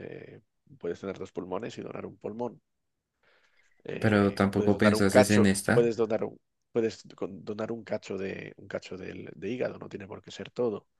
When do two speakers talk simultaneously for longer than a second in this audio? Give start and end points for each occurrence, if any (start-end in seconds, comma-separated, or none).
4.0-5.9